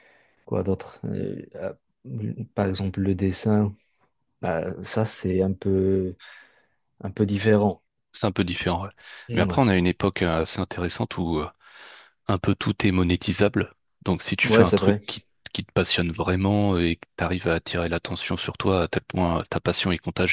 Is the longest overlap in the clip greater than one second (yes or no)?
no